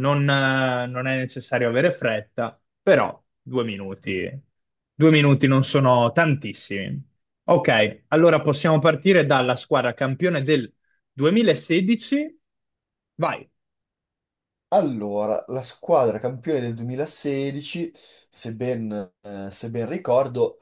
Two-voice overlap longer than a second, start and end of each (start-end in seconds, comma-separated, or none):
none